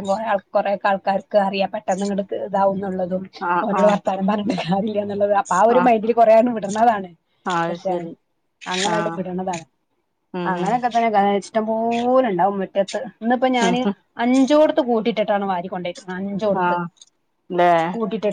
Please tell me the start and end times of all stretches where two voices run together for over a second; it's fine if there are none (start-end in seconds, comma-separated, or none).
none